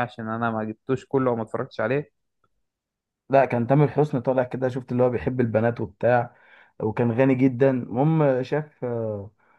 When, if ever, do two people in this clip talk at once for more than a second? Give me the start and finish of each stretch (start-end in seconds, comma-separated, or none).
none